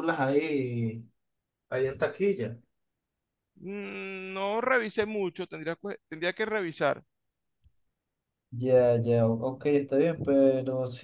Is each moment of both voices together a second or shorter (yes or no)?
yes